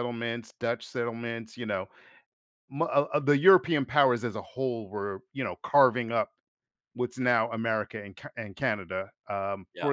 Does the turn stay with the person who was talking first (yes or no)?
yes